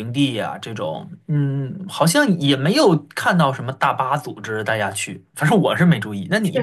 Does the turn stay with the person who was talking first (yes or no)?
no